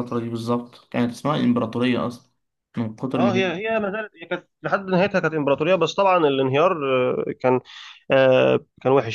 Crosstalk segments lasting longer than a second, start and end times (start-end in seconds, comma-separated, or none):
none